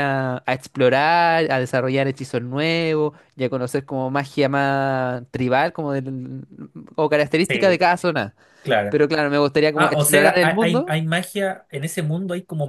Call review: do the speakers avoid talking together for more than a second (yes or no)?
no